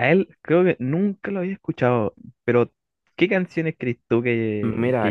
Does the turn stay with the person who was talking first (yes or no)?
yes